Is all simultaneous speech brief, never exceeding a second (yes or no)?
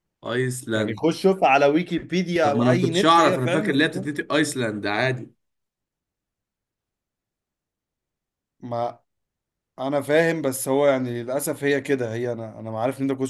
no